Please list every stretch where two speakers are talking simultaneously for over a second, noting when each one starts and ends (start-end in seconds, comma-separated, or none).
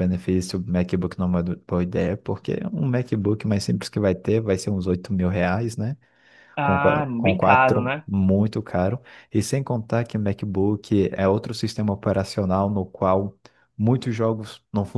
6.6-8.1